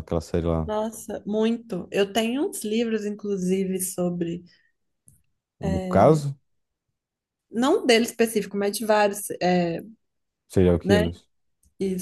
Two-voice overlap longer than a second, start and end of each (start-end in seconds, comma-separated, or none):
none